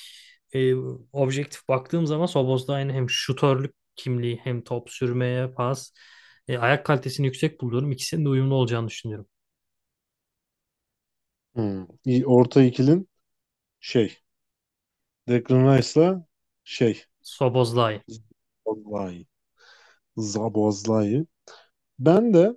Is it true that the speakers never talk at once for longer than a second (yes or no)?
yes